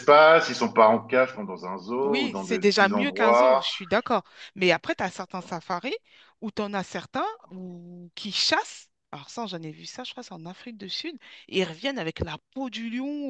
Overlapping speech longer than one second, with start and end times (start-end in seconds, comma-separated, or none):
2.0-3.7